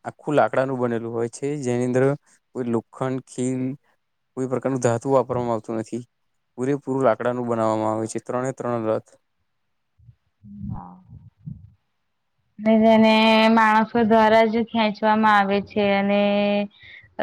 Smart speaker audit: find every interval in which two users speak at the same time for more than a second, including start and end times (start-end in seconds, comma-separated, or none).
none